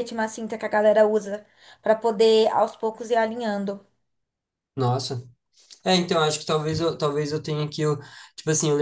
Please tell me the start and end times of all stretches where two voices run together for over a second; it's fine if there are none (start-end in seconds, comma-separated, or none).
none